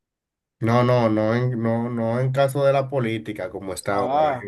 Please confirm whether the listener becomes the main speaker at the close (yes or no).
no